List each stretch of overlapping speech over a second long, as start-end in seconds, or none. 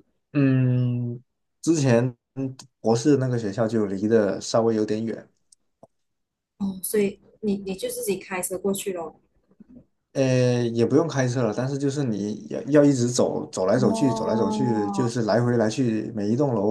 13.8-15.1